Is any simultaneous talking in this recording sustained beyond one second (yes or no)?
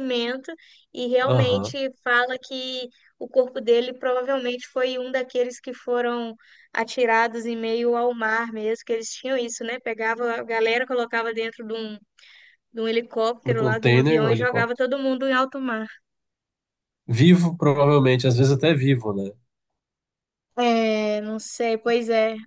yes